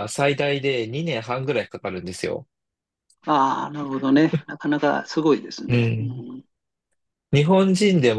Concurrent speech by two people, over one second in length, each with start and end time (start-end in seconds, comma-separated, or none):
none